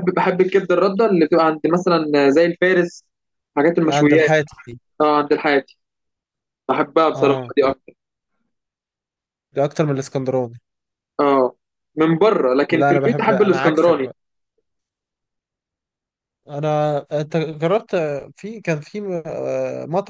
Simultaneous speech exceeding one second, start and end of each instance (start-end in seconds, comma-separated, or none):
12.7-14.1